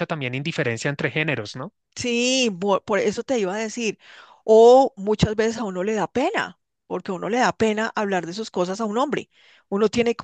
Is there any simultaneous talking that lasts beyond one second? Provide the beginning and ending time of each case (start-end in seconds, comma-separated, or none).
none